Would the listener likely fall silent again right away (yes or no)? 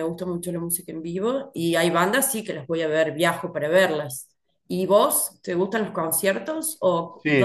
no